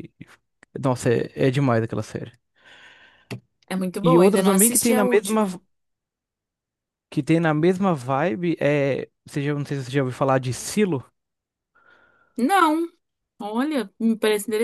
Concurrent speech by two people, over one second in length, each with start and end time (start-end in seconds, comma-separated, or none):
4.0-5.5